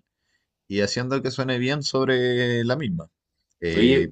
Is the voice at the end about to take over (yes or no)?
no